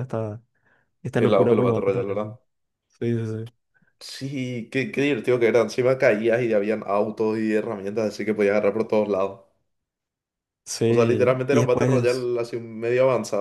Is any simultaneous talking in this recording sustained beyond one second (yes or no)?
yes